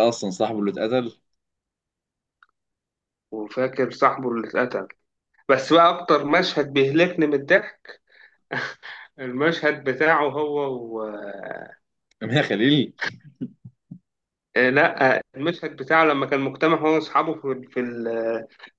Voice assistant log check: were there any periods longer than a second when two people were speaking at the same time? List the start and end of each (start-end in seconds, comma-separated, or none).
none